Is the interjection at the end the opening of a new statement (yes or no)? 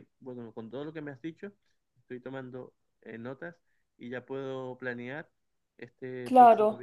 no